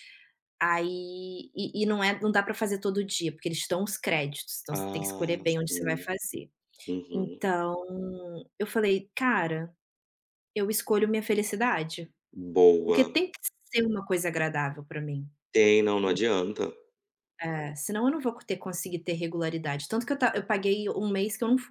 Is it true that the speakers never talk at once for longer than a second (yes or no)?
no